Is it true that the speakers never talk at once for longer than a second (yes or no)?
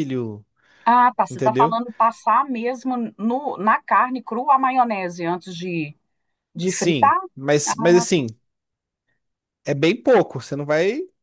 yes